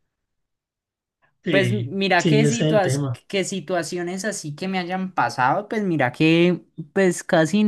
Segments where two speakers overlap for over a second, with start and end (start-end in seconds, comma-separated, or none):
1.5-3.2